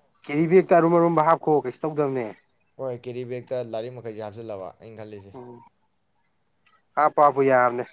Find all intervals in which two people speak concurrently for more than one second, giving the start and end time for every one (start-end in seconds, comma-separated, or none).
none